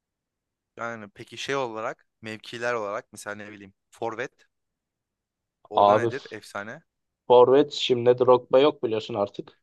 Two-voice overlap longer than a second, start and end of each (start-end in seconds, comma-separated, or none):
none